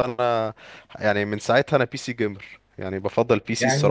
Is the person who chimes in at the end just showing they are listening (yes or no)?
no